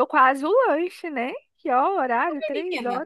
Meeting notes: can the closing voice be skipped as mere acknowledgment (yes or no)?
no